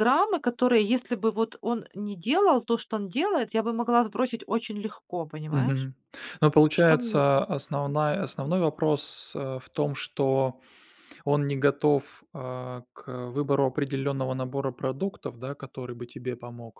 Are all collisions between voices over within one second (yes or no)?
yes